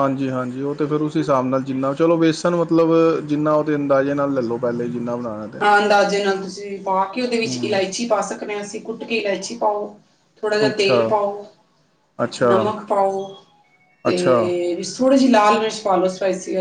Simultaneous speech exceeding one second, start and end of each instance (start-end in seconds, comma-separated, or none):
none